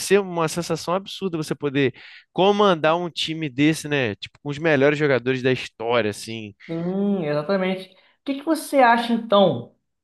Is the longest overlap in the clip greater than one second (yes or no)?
no